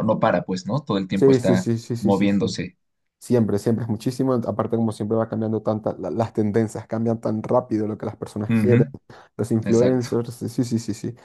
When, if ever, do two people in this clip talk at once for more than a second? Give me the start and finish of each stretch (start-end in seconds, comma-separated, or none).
1.1-2.6